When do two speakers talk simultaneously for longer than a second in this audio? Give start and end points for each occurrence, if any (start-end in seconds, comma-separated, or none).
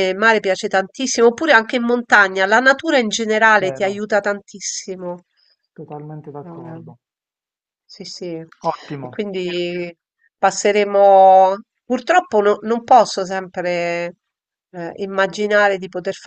none